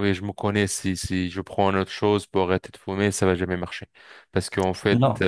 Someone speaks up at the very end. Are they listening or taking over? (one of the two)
listening